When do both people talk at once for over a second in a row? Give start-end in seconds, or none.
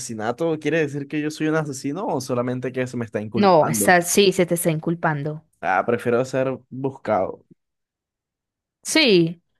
none